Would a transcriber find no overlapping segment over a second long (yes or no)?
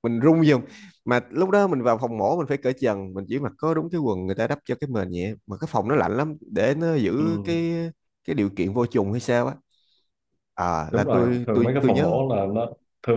no